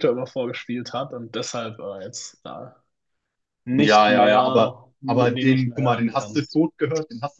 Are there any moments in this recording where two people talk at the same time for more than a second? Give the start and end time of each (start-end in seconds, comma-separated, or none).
3.8-6.6